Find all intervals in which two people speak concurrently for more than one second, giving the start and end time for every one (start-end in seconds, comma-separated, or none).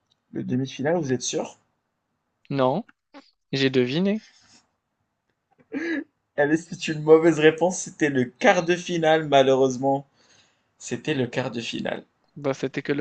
none